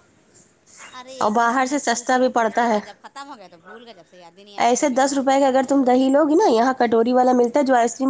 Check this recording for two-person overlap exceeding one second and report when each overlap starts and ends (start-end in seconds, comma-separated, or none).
1.2-2.8